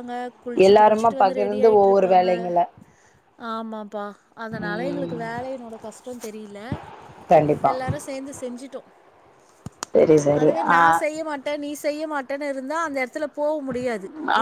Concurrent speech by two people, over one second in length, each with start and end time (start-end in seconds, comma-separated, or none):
0.7-2.3